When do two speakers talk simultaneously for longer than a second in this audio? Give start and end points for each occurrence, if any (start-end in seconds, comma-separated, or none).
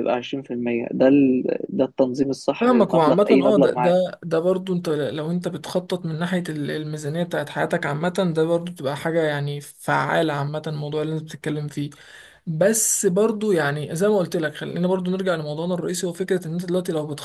2.6-4.0